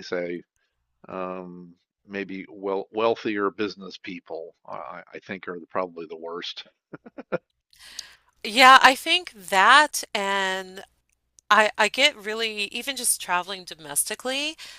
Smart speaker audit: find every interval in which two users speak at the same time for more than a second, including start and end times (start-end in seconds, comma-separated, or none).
none